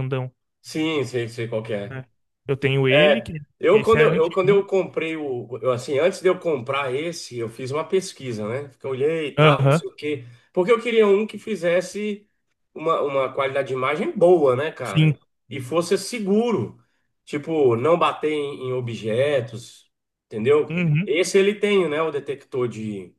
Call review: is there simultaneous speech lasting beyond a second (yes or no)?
yes